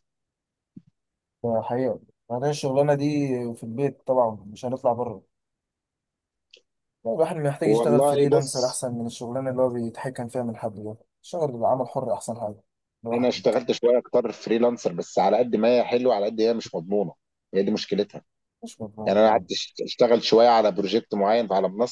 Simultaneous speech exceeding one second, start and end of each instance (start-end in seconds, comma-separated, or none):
7.6-8.8